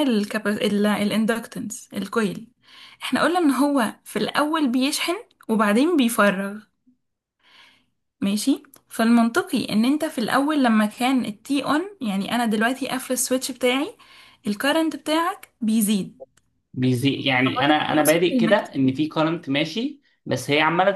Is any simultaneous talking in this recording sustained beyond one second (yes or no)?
yes